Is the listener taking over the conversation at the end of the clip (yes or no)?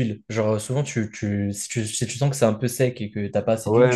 yes